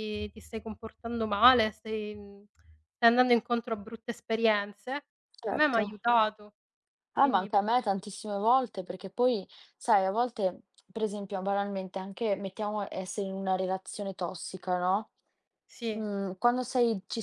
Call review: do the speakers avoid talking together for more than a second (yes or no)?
yes